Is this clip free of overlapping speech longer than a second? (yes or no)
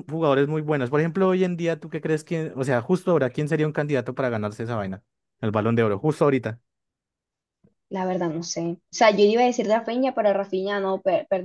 yes